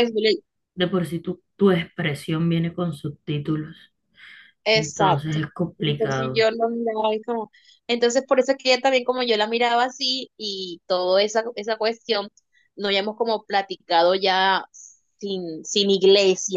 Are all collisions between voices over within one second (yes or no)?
no